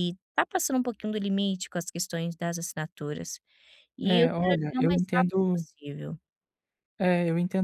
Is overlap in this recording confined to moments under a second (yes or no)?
no